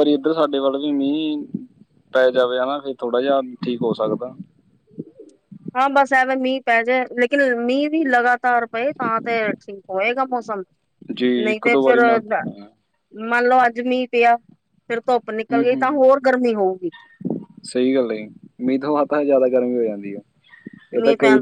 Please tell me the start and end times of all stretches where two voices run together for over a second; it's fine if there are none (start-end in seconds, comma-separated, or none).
none